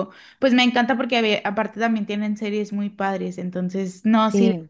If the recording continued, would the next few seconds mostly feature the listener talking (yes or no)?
no